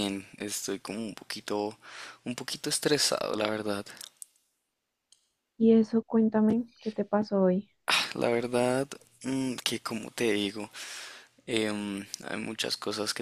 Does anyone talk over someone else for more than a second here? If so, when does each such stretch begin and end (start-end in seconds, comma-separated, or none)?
none